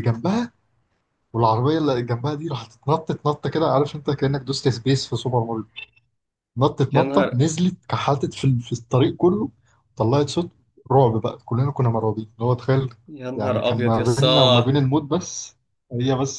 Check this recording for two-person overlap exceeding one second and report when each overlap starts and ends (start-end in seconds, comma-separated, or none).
13.4-14.8